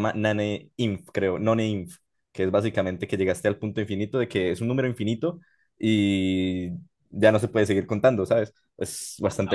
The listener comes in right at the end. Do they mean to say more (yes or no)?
yes